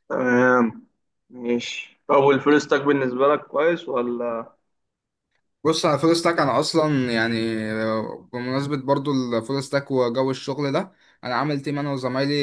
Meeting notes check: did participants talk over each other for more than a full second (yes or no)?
no